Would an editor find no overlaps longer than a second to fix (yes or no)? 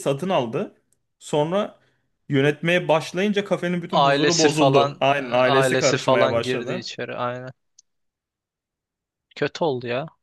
no